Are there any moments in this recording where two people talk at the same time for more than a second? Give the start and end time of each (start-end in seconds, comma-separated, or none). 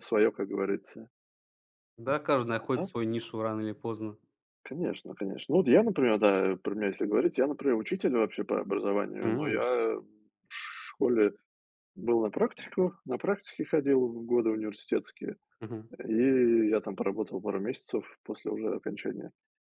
none